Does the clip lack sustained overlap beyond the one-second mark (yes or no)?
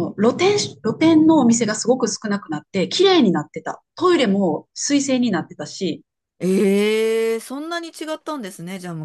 yes